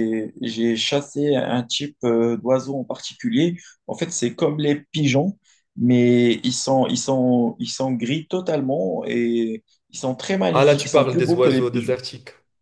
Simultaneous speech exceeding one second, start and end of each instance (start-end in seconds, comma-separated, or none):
10.5-12.0